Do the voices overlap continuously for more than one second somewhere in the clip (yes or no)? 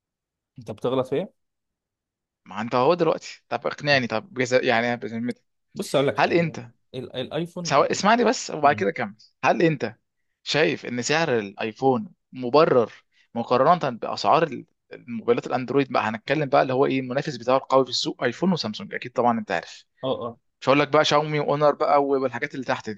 no